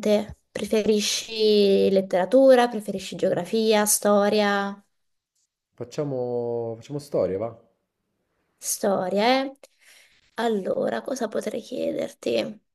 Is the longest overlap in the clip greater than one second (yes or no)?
no